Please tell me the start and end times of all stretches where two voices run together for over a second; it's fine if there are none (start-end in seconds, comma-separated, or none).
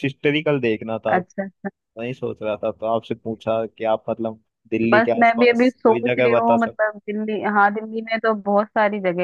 4.9-6.8